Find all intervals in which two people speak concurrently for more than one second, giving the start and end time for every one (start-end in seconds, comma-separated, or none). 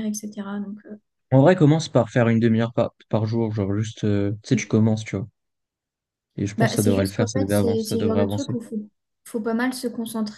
6.6-8.6